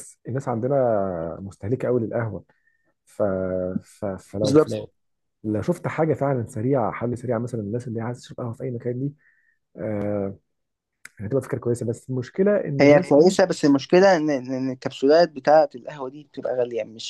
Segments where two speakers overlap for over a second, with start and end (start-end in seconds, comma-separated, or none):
none